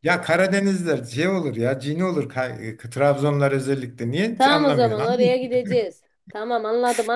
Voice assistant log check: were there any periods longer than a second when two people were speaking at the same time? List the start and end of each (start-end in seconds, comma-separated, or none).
4.3-5.7